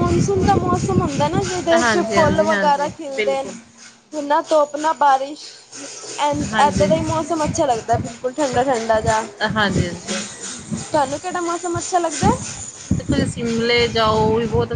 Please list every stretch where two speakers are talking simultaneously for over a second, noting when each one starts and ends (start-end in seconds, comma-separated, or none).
1.7-3.5